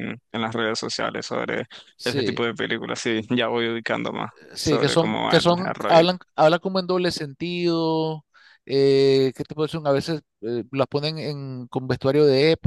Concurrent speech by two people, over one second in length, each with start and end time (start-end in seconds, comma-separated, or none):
4.5-6.0